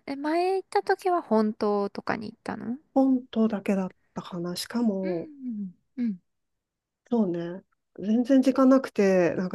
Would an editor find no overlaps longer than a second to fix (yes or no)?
yes